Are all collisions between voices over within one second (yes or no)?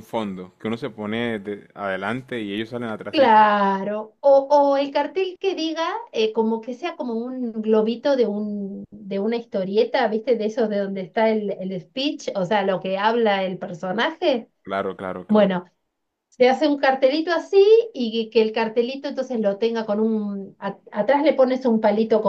yes